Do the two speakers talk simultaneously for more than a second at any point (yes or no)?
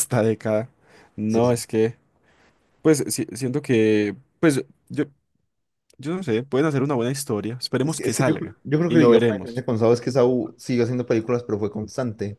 yes